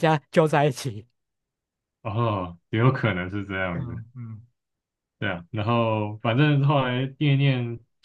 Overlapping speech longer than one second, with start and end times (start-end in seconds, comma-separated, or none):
none